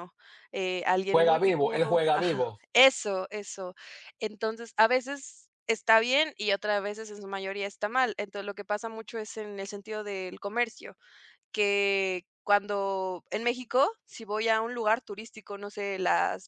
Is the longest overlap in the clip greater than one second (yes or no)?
yes